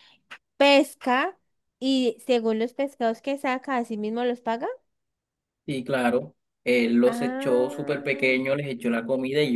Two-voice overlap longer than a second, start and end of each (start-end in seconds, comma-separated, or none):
7.0-8.3